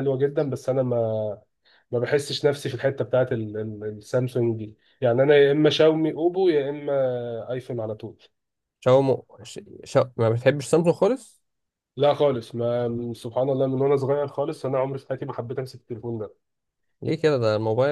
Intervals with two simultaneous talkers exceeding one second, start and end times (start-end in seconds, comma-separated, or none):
none